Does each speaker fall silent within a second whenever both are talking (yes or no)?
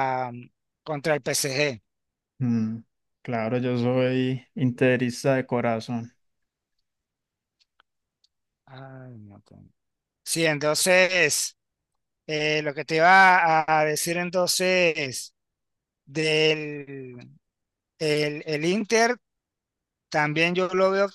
yes